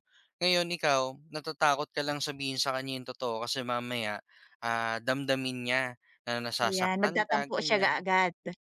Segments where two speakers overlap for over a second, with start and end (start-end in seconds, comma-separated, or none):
6.6-8.0